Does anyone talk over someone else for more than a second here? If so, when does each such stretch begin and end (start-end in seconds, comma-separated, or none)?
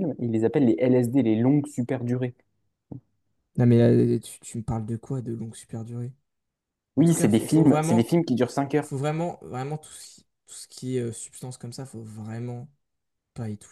7.0-8.2